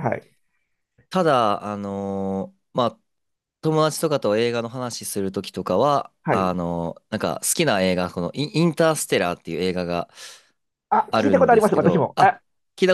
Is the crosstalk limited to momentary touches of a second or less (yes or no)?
no